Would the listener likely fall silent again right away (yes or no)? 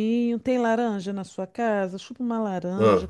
yes